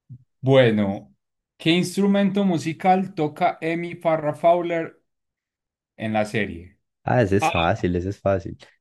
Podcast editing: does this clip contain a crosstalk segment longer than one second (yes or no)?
no